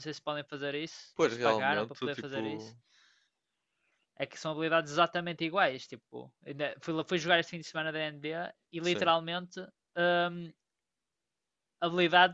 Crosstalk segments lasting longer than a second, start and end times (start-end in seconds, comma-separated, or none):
1.1-2.7